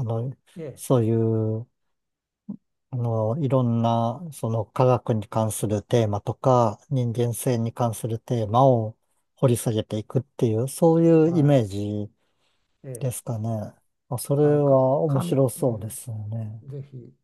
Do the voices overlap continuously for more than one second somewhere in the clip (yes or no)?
yes